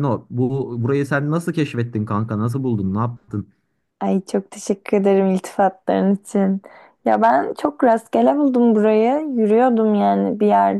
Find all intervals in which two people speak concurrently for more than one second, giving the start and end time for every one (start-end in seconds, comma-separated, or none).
none